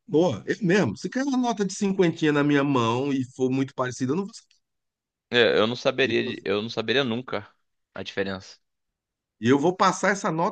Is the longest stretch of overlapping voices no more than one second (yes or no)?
yes